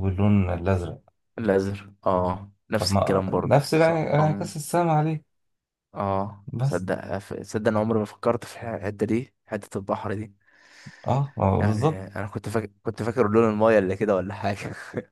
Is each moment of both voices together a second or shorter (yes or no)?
no